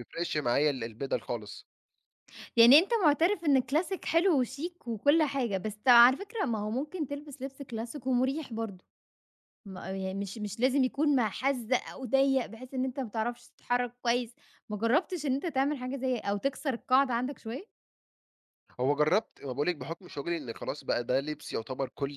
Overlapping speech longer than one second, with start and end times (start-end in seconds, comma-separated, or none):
none